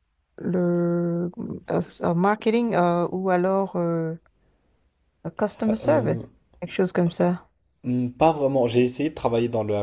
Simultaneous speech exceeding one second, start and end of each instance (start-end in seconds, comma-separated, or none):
none